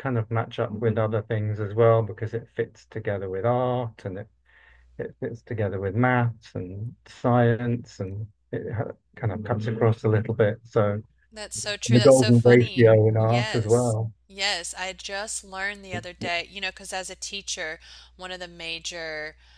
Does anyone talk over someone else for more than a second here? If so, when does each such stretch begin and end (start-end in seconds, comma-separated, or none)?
11.9-14.1